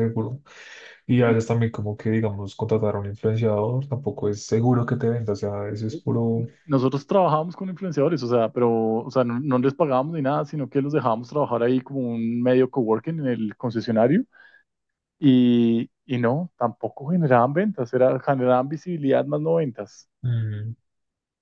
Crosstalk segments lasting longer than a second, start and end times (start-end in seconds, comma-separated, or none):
none